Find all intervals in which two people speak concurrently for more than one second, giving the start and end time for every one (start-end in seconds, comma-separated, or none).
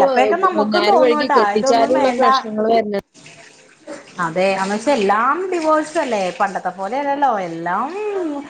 0.6-2.4